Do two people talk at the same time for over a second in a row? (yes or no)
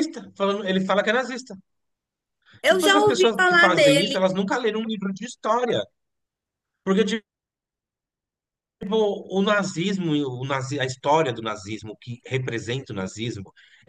yes